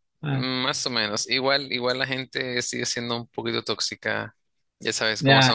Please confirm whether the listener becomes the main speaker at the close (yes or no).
yes